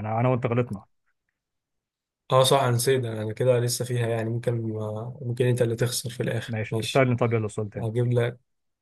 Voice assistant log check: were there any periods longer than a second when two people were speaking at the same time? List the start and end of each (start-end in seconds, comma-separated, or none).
none